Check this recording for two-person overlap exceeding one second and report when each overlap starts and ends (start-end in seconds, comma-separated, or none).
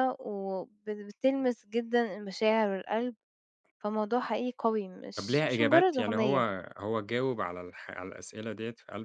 5.2-6.4